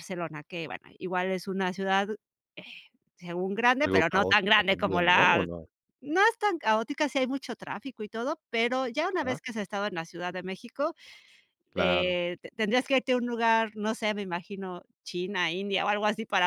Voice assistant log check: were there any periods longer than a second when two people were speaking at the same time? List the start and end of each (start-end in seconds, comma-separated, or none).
3.8-5.5